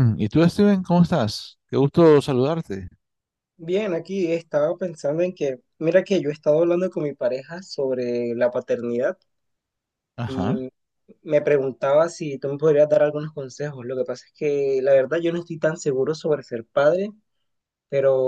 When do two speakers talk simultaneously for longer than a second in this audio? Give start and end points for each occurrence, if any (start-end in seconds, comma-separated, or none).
none